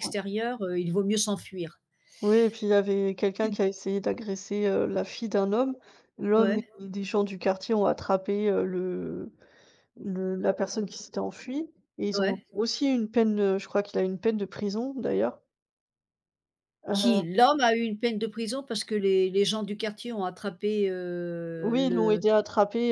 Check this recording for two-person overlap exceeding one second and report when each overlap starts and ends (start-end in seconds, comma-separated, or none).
none